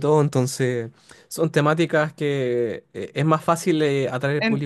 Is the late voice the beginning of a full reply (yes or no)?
yes